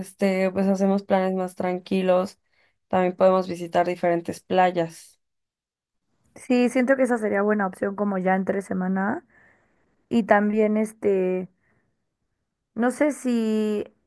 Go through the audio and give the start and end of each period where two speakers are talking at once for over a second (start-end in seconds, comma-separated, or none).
none